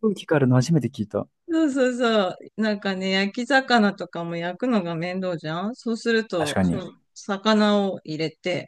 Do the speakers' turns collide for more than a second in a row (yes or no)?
no